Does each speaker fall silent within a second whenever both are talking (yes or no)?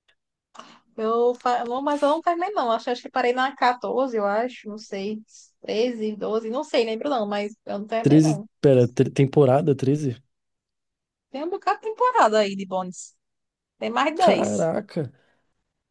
yes